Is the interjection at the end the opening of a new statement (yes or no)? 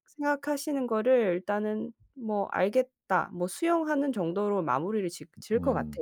yes